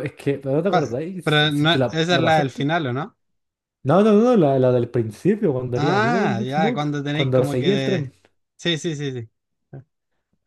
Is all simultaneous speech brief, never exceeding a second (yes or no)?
no